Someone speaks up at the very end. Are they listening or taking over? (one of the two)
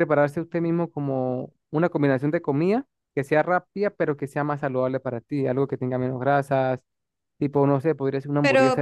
taking over